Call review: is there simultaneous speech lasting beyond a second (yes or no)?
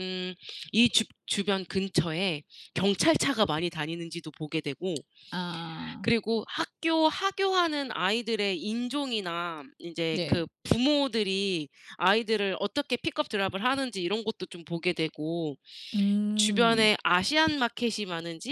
no